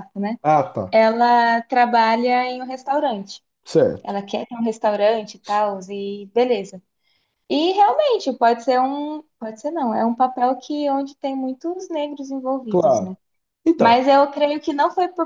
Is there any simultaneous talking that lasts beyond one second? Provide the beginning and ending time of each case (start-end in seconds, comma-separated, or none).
none